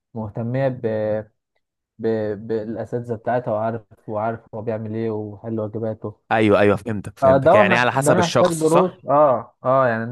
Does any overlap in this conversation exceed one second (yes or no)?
yes